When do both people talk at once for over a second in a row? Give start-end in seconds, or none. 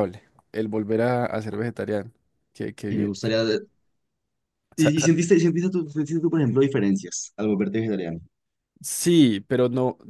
none